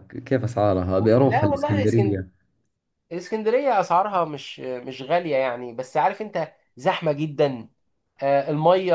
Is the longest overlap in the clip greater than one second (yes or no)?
yes